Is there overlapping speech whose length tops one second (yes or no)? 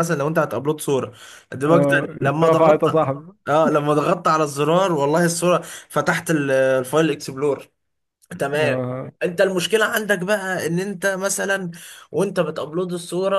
yes